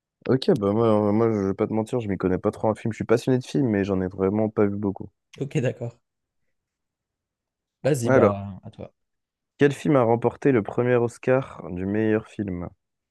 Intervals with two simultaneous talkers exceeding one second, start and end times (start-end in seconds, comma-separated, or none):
none